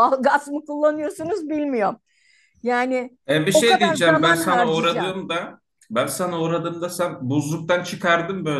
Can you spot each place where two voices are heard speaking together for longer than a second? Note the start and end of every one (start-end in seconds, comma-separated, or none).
3.5-5.2